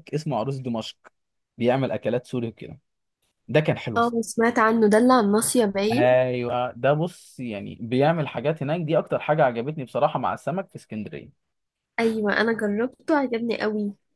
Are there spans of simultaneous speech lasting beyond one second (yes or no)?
no